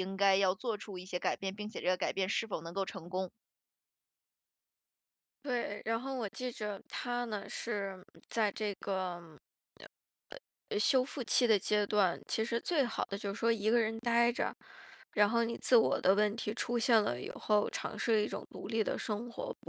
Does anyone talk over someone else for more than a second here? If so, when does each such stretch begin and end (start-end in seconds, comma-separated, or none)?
none